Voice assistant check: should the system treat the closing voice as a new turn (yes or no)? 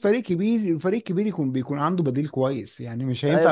yes